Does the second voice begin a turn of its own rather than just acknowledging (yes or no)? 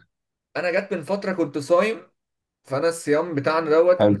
no